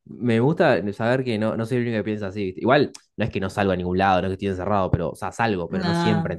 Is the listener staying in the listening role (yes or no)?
yes